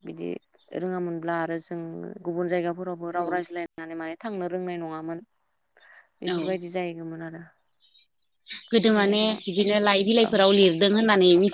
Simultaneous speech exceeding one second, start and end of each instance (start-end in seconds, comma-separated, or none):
none